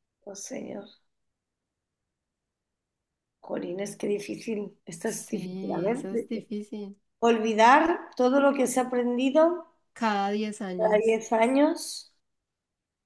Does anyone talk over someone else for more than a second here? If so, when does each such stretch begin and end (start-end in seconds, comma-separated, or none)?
5.0-6.3